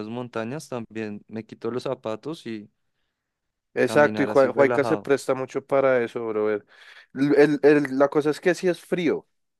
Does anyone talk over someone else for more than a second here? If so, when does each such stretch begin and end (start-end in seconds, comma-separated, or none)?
3.8-5.1